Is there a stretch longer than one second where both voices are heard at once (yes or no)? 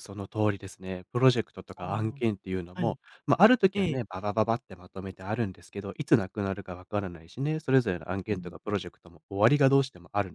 yes